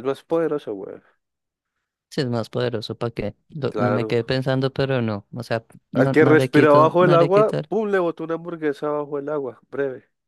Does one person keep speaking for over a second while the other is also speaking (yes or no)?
yes